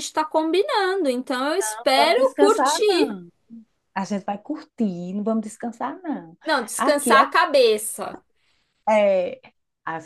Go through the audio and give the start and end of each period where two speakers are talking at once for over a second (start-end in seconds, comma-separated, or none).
1.6-3.2